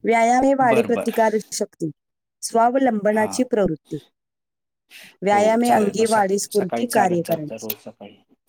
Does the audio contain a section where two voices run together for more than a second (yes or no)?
yes